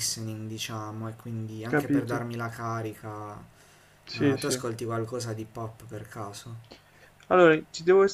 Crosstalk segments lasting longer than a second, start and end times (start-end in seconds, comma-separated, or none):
none